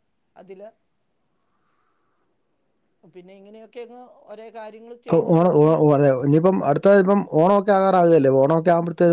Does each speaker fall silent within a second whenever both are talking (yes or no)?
yes